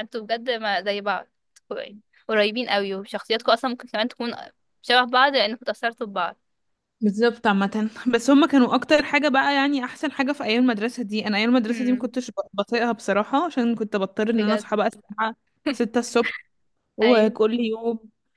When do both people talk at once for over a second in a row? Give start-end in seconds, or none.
none